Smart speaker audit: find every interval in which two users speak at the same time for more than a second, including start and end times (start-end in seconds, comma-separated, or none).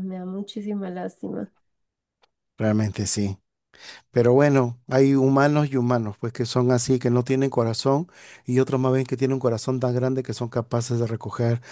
none